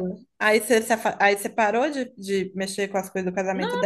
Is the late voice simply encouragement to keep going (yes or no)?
no